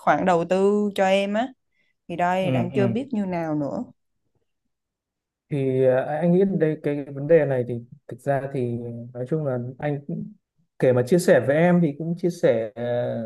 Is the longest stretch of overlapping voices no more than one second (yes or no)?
yes